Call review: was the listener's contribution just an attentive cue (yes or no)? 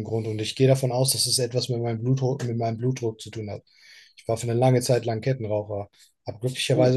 yes